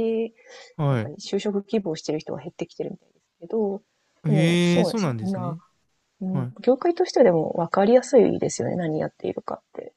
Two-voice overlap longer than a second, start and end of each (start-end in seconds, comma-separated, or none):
4.2-5.6